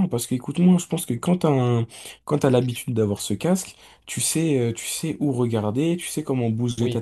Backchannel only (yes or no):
no